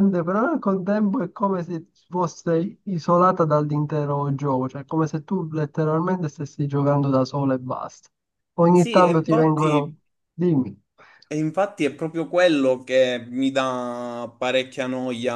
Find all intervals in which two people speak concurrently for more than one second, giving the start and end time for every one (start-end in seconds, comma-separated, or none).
8.7-9.9